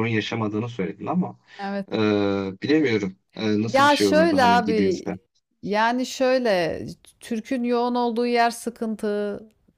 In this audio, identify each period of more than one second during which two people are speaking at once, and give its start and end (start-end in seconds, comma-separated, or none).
3.7-5.0